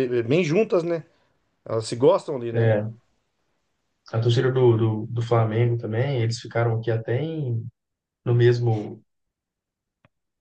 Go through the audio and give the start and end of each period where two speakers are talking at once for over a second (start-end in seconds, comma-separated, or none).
none